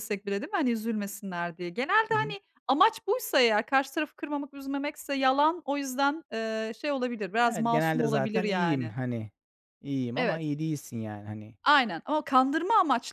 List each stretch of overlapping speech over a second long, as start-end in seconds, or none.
7.4-8.9